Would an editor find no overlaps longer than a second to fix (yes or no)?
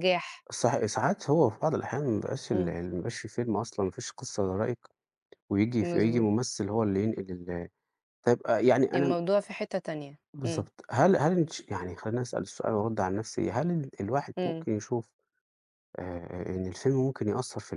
yes